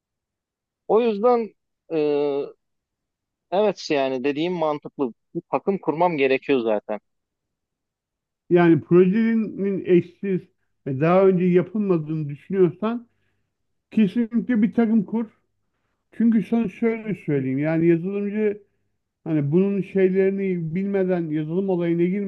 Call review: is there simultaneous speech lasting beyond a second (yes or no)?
no